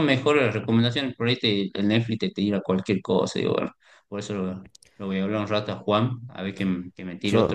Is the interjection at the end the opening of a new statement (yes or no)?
no